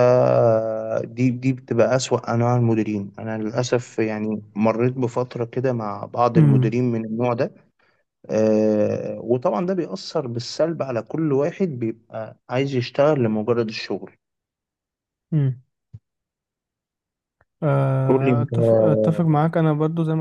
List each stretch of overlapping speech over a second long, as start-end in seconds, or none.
18.1-19.4